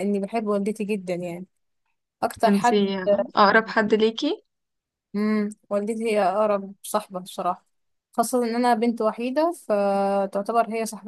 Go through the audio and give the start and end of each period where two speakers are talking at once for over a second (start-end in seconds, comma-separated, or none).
none